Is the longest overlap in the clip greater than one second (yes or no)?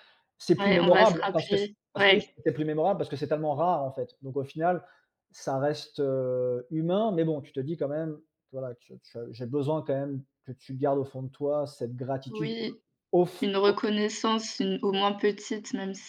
yes